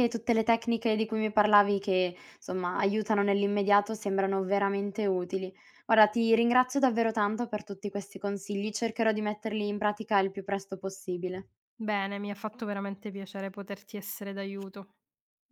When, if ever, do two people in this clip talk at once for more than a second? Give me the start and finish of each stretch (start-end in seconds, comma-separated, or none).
none